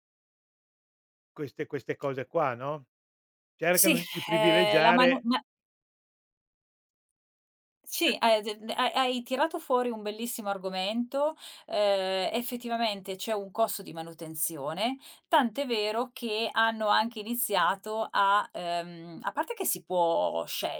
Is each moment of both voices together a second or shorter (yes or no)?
no